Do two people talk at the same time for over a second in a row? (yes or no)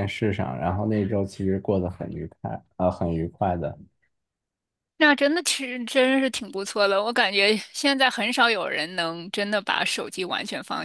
no